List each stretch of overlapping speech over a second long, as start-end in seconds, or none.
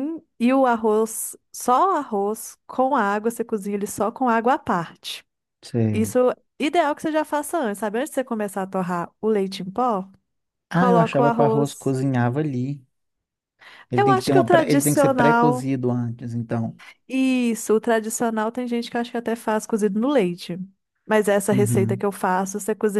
10.7-12.0, 13.9-15.7